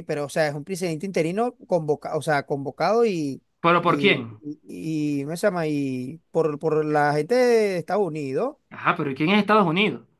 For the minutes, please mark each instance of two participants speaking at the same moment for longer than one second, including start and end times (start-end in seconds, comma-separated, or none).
none